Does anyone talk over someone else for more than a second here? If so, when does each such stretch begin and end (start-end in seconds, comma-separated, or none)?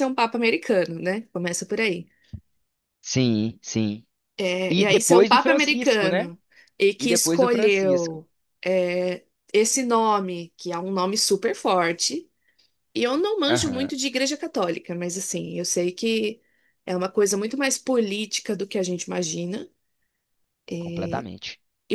4.7-6.3, 7.0-8.2